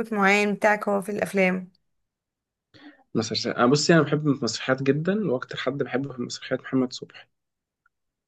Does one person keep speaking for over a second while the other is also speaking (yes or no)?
no